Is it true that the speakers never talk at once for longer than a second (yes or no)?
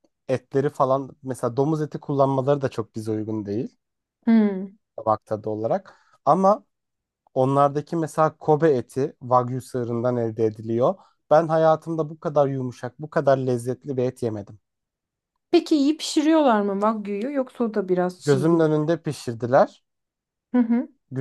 yes